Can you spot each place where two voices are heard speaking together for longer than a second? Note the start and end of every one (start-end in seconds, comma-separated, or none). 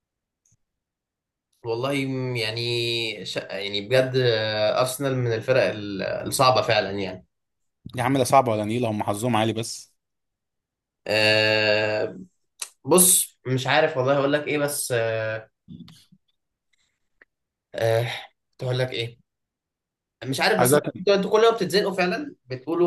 none